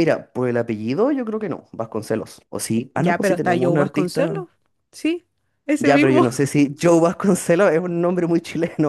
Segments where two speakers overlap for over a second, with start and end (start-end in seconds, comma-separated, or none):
2.9-4.5